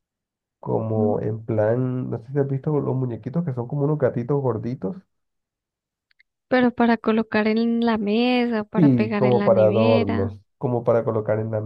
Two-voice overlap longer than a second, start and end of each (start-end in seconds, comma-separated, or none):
8.7-10.3